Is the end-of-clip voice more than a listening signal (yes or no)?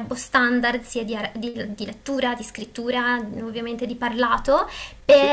no